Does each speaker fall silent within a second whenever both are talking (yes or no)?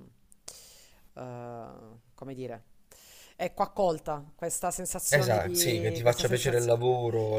no